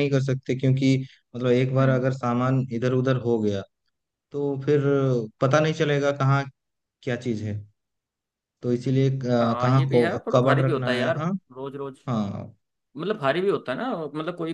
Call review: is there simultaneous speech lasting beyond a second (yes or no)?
yes